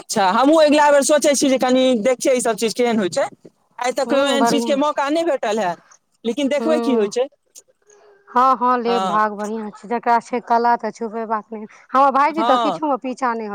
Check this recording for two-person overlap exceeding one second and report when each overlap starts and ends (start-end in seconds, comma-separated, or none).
none